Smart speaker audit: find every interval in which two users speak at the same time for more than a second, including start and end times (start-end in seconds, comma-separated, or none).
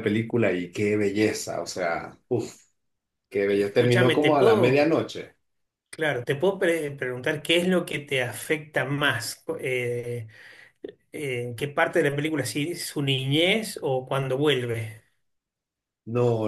3.5-5.0